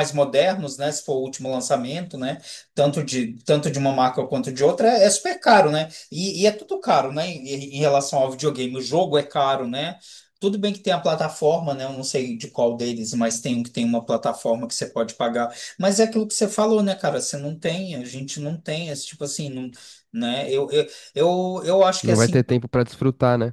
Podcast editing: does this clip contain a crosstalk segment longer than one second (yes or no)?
no